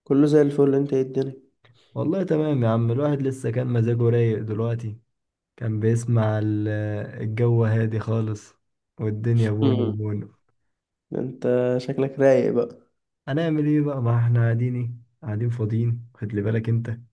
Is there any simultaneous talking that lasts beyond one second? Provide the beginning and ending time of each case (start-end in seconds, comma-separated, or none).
none